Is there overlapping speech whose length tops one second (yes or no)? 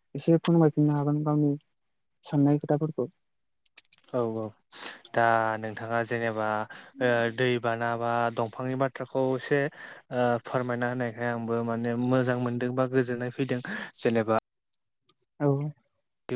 no